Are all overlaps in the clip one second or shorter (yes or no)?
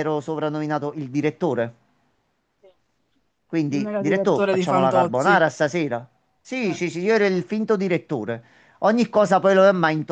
no